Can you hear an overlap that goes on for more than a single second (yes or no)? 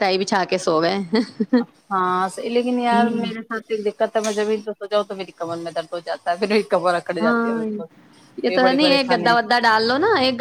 no